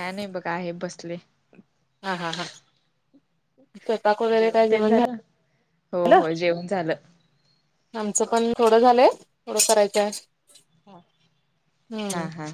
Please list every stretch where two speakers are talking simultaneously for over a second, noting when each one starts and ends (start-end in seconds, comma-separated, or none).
none